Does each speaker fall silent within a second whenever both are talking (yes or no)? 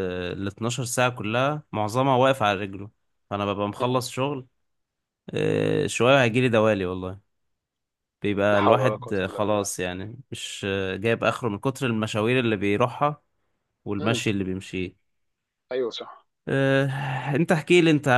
no